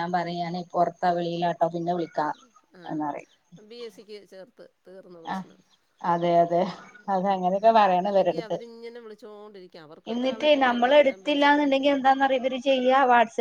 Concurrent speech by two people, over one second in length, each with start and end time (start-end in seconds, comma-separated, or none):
10.1-12.0